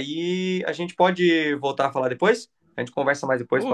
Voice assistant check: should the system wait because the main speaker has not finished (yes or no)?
no